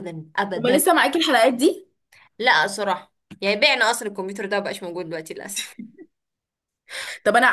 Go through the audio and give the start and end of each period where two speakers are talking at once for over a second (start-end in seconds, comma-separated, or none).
none